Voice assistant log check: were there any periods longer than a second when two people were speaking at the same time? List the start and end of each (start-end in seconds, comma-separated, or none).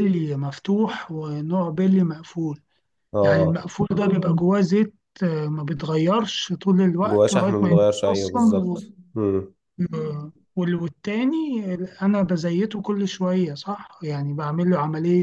7.1-8.8